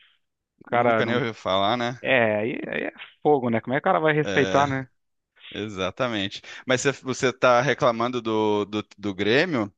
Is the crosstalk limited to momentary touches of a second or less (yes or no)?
yes